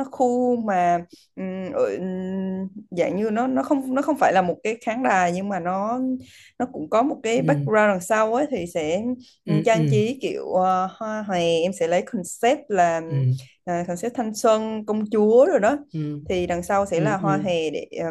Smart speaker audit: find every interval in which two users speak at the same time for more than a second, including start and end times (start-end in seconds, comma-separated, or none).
none